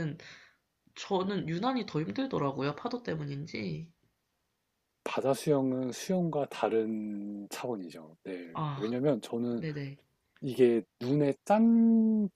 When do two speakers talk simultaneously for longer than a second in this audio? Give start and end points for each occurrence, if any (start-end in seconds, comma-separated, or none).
none